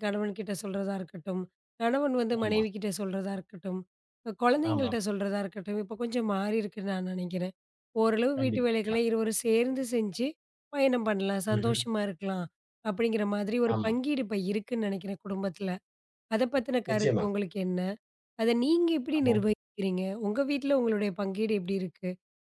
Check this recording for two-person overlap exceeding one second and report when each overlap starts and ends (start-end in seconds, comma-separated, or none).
none